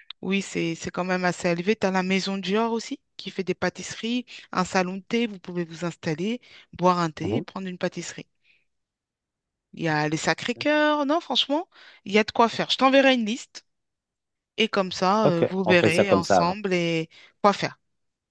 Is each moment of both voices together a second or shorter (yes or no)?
no